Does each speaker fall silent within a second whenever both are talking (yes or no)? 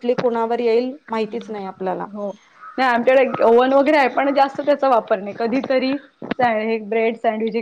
yes